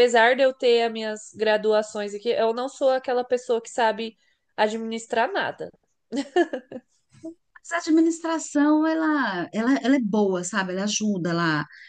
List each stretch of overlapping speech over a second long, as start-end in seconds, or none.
none